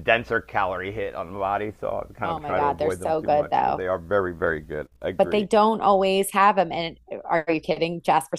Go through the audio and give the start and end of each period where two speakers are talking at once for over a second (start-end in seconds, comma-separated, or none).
2.2-3.9